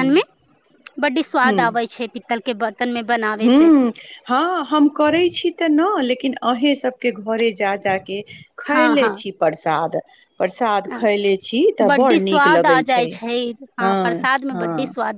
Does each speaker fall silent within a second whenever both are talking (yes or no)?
no